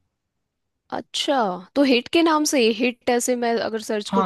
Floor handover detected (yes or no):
yes